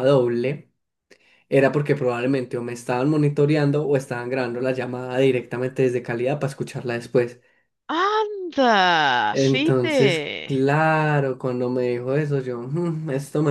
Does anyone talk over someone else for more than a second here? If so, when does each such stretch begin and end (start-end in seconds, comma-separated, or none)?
9.3-10.6